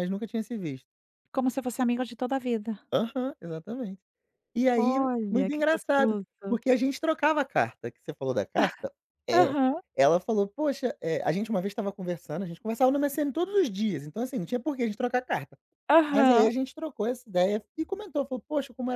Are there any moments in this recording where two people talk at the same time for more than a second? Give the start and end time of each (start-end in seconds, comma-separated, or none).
4.7-6.3